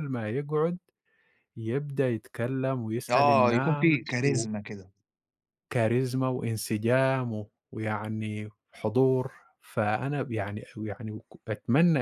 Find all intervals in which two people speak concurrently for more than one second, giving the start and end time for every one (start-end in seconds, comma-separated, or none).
3.1-4.5